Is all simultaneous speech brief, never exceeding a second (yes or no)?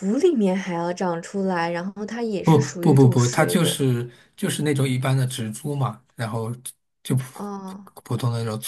no